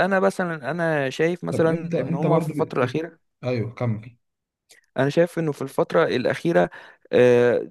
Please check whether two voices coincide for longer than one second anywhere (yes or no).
yes